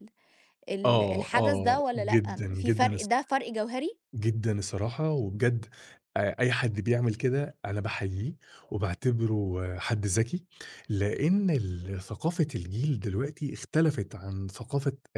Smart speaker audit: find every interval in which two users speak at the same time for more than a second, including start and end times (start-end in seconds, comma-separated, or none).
0.8-3.1